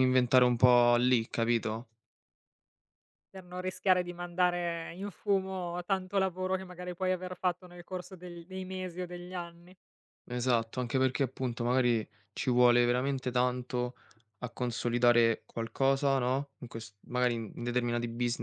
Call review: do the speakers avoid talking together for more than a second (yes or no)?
yes